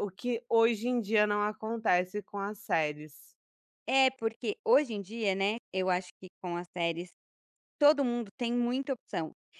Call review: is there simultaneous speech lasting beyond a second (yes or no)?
no